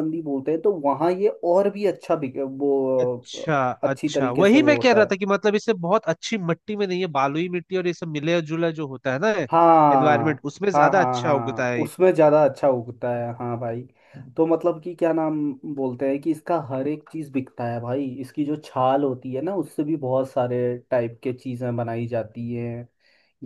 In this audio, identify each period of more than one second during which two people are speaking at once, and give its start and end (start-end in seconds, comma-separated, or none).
3.8-5.1, 9.9-11.9